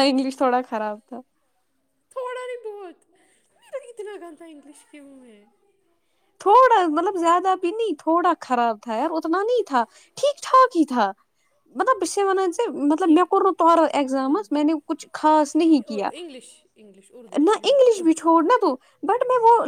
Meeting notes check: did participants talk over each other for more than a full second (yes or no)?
no